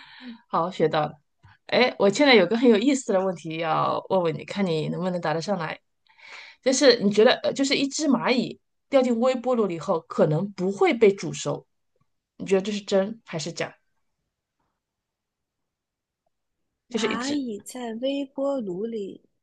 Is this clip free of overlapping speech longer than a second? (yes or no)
yes